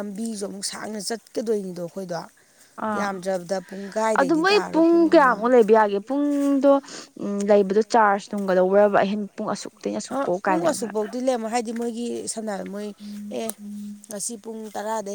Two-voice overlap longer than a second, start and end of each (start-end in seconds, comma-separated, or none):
none